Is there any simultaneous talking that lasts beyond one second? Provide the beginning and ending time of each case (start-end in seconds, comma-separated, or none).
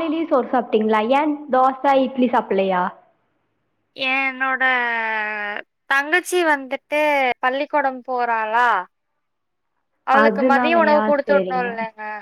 10.2-11.7